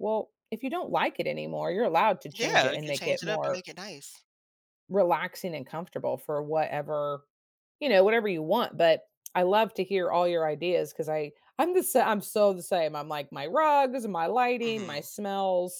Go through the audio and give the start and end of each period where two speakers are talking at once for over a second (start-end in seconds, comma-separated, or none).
2.4-3.6